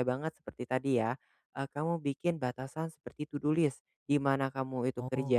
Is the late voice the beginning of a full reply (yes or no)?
no